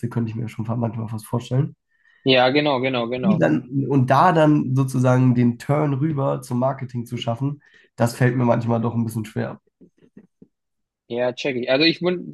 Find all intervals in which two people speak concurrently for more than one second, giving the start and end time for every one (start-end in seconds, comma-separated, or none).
none